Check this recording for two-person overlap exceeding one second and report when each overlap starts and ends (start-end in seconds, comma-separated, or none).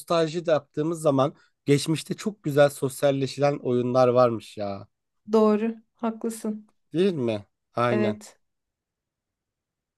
none